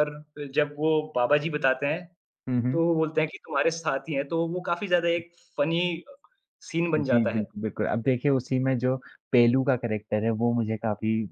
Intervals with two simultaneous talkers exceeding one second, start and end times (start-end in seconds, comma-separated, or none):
none